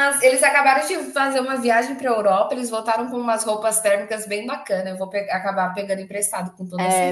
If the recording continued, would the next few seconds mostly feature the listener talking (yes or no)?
yes